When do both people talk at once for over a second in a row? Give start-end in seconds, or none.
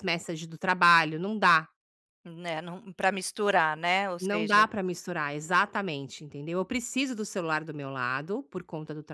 none